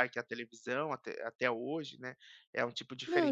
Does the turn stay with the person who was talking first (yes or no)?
no